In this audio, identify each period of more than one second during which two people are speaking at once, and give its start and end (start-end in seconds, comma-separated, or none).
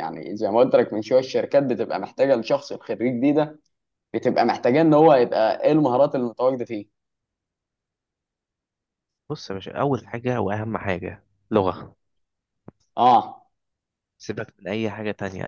none